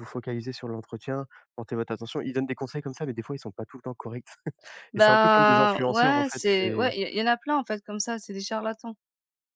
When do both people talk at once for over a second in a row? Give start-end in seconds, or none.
5.0-6.9